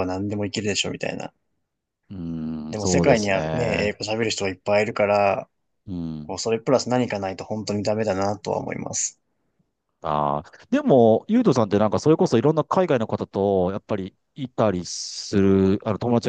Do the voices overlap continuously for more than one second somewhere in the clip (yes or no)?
yes